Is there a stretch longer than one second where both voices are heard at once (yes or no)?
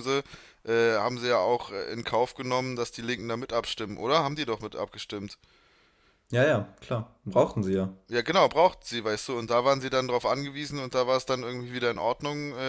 no